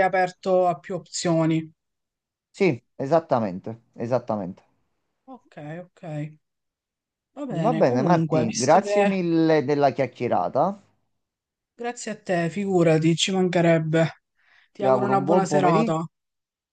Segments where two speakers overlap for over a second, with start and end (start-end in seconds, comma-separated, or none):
7.6-9.2, 14.8-16.0